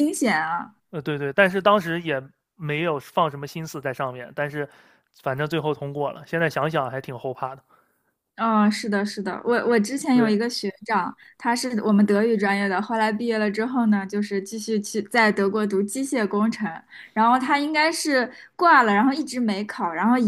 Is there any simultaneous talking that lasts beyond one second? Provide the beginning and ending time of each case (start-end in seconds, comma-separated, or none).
none